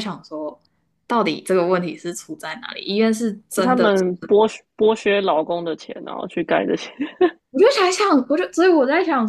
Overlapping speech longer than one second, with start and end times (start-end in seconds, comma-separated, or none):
none